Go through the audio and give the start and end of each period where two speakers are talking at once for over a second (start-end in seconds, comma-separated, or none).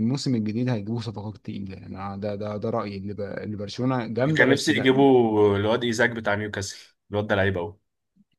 none